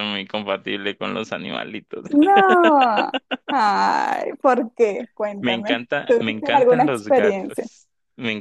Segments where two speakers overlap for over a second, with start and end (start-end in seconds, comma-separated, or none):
5.4-7.7